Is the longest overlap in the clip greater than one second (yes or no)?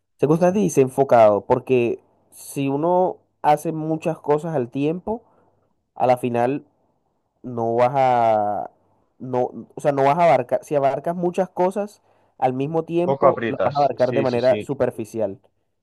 yes